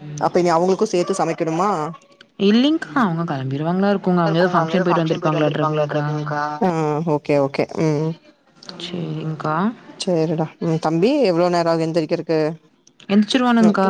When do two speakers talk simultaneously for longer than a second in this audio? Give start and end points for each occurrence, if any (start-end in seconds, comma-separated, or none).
4.6-6.0